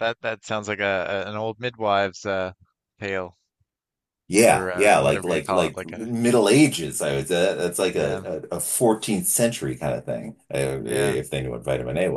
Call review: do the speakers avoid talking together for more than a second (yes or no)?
no